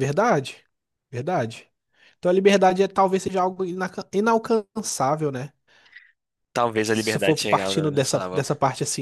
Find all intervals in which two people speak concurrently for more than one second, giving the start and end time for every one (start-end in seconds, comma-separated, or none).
6.9-8.5